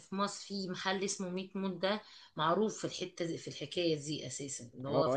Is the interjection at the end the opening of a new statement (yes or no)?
yes